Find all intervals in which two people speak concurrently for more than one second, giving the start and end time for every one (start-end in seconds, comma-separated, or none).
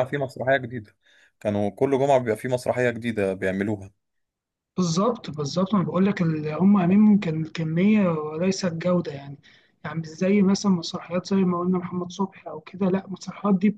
none